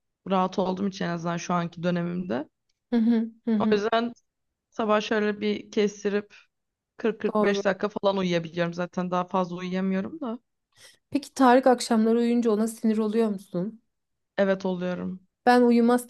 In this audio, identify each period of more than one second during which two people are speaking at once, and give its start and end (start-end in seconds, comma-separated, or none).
none